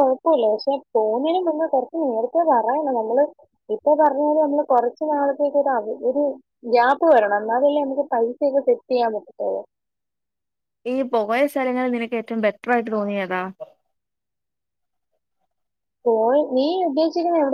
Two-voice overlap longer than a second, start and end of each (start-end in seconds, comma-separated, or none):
none